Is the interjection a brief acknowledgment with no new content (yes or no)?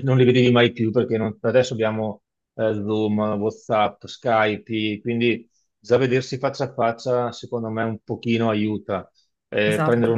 yes